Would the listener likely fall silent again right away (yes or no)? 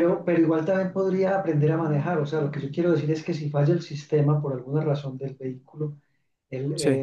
yes